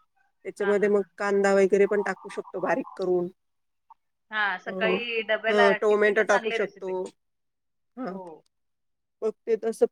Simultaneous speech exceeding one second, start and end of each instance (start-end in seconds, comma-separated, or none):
5.5-6.9